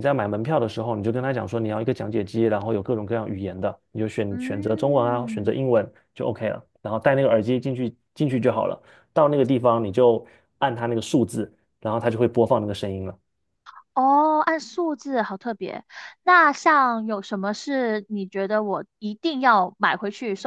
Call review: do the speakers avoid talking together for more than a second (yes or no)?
no